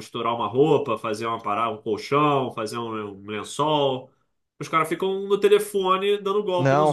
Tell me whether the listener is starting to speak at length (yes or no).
yes